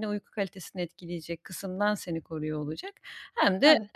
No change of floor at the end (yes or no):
yes